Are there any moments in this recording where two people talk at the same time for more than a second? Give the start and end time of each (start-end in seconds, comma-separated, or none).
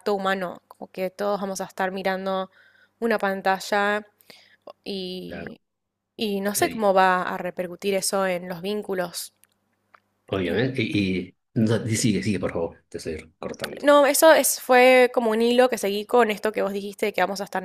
none